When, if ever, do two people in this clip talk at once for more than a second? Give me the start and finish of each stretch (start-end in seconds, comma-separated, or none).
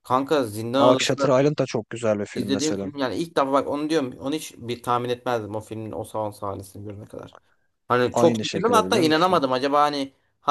8.1-9.4